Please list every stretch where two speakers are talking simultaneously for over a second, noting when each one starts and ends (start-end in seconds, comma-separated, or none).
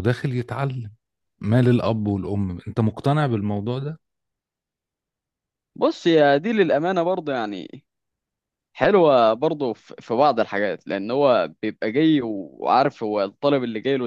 none